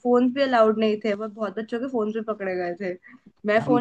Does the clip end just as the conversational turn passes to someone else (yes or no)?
no